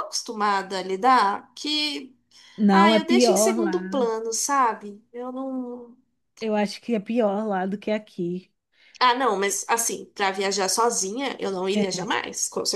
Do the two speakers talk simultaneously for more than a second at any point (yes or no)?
yes